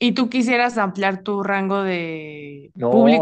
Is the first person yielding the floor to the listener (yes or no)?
yes